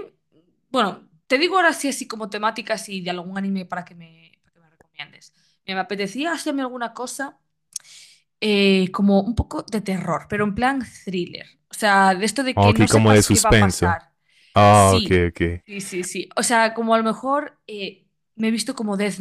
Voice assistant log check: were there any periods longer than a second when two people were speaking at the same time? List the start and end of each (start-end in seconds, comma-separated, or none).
12.6-14.0